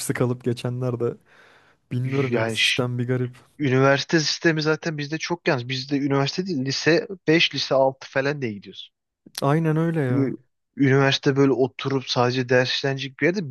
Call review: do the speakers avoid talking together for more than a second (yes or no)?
yes